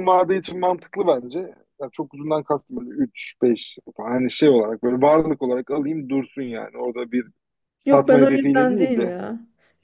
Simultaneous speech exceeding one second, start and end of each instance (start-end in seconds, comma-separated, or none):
7.8-9.2